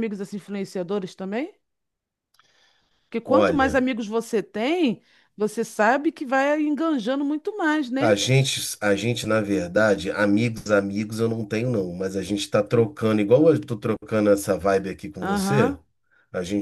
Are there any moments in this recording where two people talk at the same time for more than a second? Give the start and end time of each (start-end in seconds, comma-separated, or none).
none